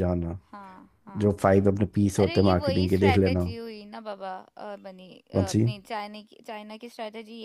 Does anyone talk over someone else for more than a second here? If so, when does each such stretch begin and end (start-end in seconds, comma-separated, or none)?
2.2-3.5